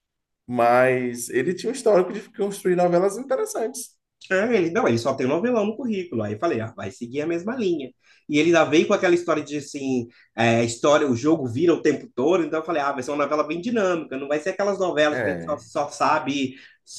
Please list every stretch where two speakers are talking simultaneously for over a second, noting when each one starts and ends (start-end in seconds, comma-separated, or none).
none